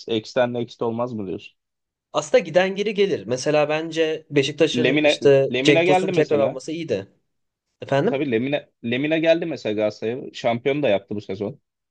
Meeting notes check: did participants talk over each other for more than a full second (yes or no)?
yes